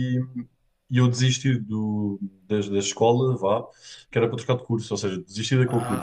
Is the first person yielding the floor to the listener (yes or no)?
yes